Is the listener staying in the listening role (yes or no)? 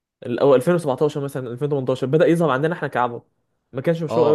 no